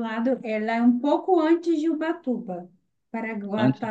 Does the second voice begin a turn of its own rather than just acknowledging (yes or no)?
no